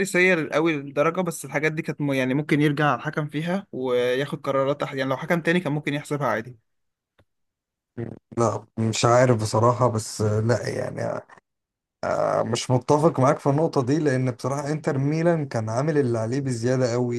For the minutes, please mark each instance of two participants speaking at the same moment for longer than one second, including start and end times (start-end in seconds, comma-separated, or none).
none